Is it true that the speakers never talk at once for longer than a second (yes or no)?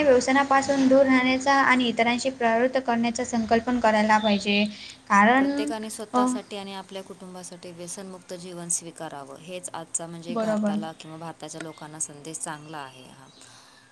yes